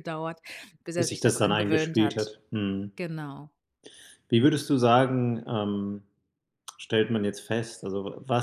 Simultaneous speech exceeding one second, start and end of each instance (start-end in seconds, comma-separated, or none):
1.0-2.3